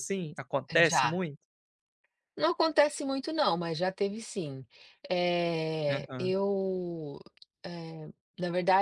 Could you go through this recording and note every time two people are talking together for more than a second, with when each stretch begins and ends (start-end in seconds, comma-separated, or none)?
none